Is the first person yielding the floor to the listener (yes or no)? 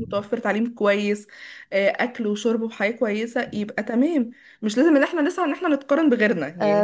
yes